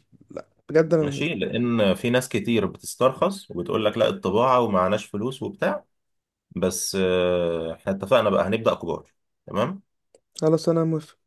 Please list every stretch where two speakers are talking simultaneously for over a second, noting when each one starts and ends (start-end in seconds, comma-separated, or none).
none